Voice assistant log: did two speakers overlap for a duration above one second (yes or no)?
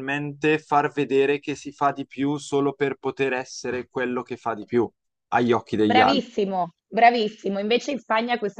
no